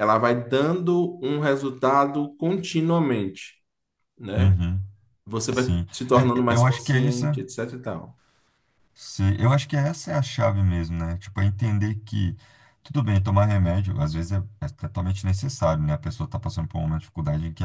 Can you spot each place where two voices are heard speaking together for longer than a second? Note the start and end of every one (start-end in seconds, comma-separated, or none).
5.5-7.2